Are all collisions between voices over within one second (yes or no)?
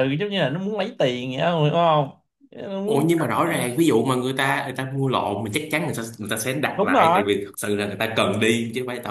yes